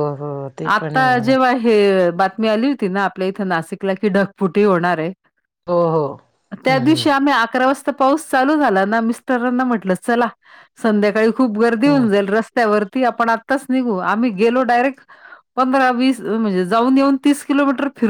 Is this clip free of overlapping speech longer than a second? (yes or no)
yes